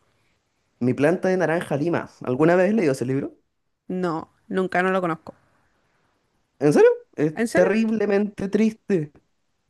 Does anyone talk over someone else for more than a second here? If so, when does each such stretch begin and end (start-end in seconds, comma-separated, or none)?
none